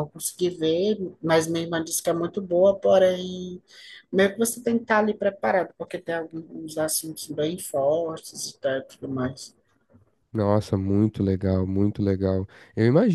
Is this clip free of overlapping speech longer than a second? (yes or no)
yes